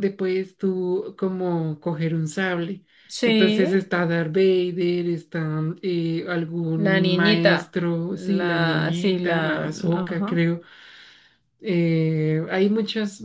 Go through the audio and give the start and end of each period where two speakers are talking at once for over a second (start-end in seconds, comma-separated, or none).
6.8-10.4